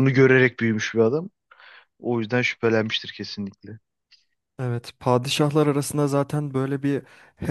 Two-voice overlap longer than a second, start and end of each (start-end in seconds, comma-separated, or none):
none